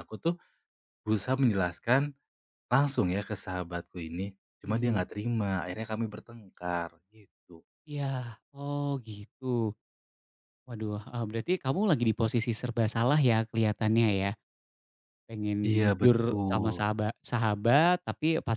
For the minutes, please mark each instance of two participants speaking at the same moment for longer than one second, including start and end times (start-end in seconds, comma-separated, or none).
15.7-16.9